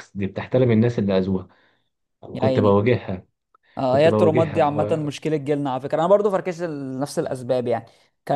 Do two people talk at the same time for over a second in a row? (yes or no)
yes